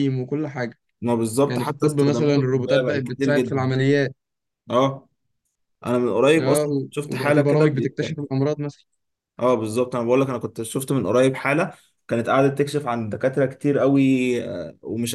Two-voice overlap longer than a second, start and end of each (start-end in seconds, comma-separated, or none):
1.5-3.7, 6.4-8.0